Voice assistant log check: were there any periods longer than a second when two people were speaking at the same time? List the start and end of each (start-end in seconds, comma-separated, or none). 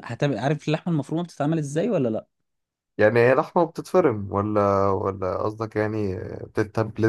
none